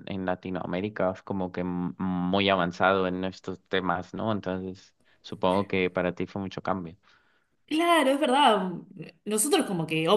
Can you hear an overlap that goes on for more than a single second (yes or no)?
no